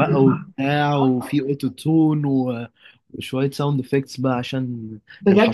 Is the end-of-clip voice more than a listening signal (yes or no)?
yes